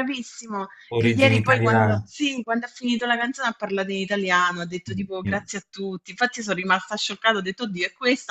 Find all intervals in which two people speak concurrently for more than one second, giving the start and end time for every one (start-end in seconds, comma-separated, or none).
0.9-2.1